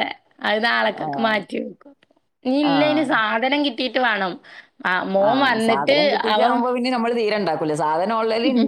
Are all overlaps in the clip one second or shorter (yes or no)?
yes